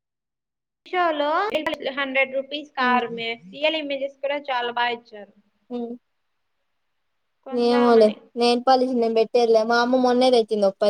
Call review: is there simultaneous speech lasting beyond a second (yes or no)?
no